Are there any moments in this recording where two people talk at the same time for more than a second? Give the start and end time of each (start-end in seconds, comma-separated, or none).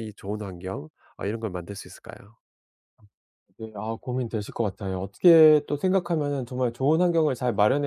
none